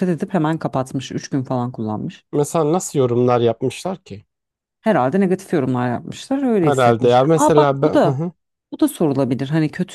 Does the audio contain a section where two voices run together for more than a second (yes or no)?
yes